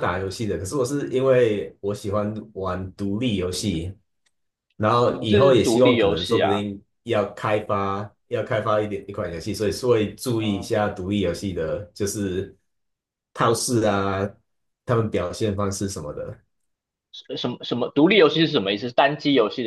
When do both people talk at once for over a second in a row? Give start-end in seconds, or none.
5.1-6.6